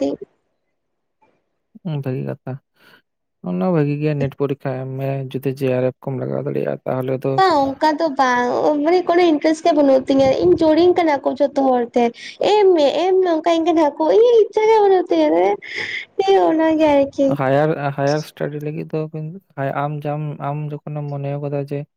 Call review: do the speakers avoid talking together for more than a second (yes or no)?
yes